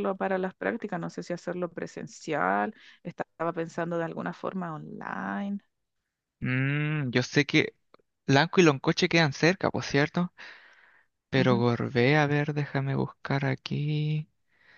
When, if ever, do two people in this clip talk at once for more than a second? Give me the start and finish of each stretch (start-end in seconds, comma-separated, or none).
none